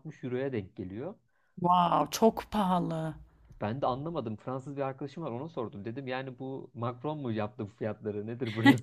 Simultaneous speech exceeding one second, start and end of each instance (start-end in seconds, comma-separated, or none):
none